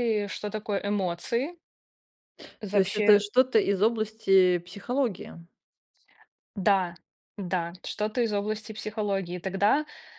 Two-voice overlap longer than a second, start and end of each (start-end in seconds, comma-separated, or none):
none